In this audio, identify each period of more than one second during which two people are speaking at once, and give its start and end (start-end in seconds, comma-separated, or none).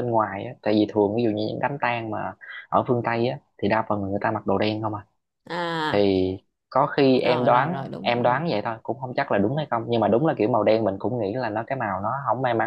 7.2-8.4